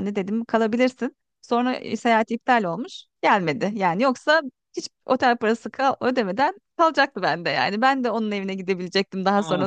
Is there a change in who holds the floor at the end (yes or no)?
no